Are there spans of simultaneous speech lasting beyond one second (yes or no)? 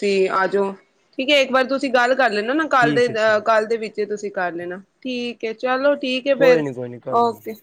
no